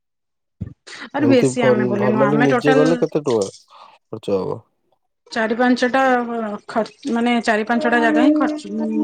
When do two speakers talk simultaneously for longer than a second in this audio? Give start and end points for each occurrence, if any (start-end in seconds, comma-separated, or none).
1.3-2.9